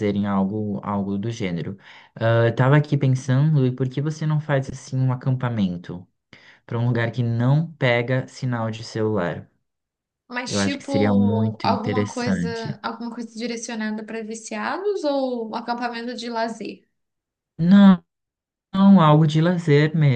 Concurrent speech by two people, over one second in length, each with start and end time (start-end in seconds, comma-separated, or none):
10.4-12.8